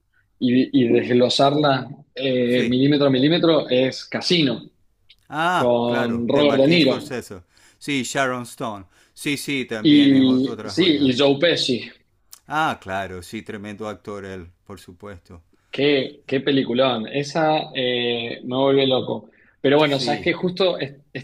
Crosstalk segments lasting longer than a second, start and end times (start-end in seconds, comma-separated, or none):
5.5-7.1, 9.8-11.2